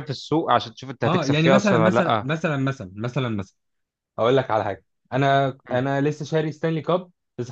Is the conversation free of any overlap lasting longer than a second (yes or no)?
no